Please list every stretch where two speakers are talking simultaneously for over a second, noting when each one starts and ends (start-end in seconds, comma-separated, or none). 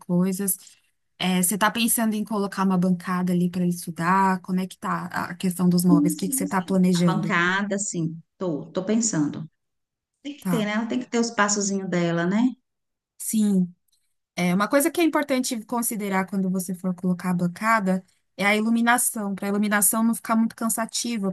5.9-7.4